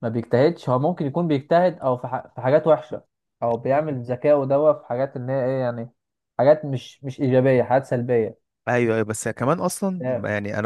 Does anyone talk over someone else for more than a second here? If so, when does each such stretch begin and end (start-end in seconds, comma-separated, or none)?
none